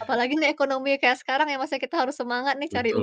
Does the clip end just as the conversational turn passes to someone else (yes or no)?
yes